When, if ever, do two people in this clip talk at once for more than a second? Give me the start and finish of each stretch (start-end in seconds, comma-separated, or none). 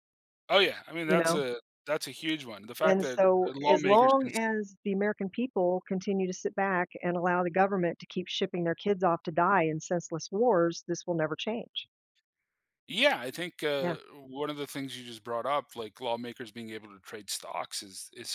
2.8-4.4